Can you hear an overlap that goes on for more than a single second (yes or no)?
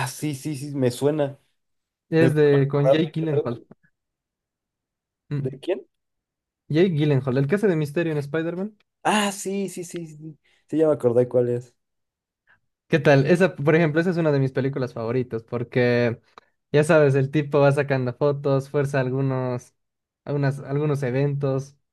yes